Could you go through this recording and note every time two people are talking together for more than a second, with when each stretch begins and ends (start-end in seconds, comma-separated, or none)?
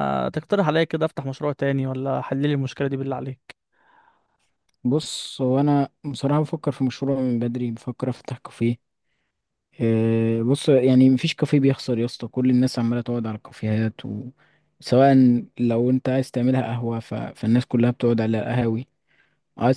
none